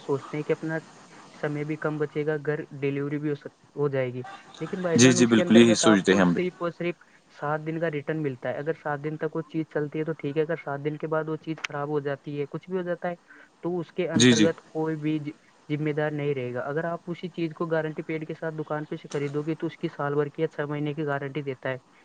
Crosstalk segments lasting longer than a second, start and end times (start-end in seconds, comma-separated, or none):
5.0-6.4